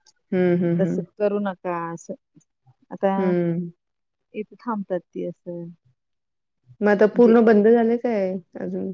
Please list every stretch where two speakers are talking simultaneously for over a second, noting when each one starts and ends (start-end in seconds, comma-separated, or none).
none